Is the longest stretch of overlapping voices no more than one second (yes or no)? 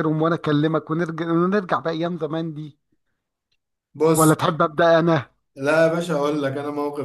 yes